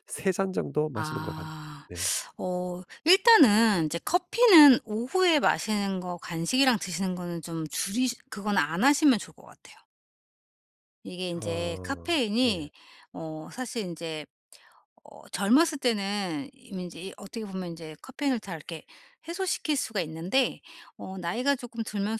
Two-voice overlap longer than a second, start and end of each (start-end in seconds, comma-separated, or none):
11.3-12.7